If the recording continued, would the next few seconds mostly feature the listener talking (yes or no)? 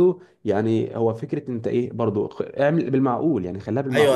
yes